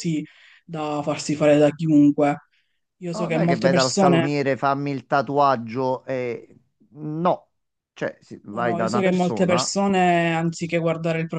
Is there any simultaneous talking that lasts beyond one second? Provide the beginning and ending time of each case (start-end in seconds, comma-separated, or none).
3.1-4.3, 8.5-9.7